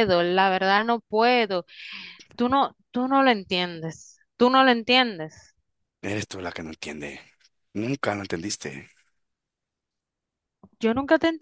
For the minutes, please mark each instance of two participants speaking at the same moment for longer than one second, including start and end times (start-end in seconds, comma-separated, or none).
none